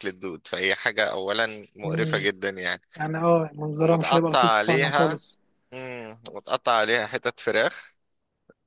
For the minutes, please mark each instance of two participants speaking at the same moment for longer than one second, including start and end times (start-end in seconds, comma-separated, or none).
3.8-5.2